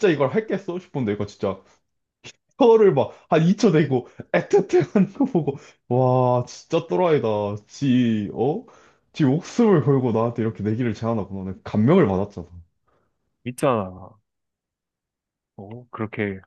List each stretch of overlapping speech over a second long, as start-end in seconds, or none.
none